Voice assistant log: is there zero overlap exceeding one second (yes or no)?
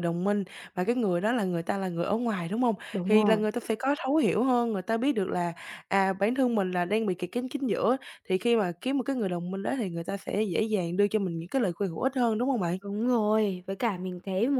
yes